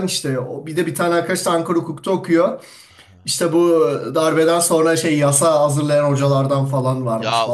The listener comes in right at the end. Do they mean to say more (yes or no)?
yes